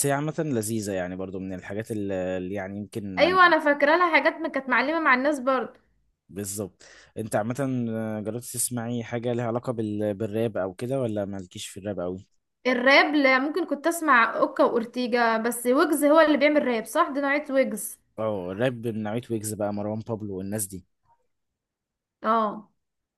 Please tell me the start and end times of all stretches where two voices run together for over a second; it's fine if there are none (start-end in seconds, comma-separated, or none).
none